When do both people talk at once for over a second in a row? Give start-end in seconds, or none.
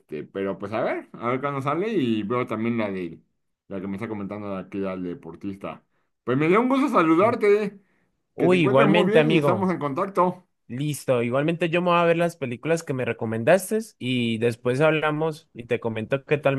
8.4-9.7